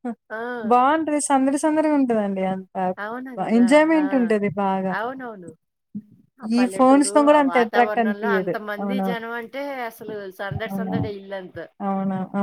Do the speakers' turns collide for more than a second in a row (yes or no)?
yes